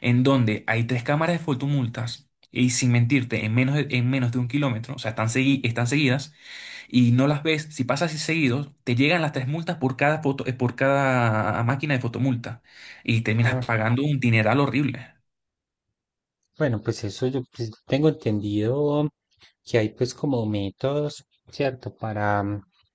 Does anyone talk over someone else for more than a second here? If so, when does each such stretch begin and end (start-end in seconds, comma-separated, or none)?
none